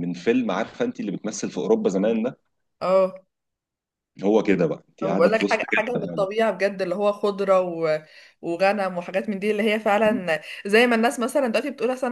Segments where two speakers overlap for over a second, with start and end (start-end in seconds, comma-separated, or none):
5.0-6.3